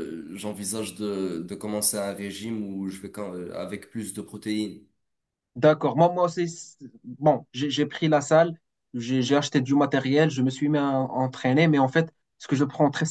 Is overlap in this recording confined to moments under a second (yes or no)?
yes